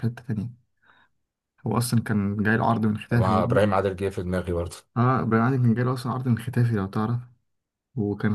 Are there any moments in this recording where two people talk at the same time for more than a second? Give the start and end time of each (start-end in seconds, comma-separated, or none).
none